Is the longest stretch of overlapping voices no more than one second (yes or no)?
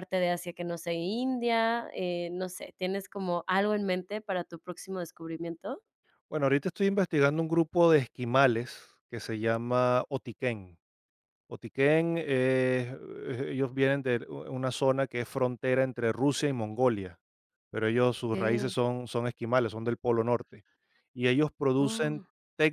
yes